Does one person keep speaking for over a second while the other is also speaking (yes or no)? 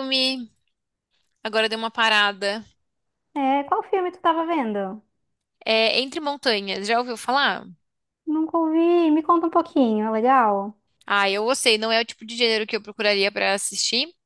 no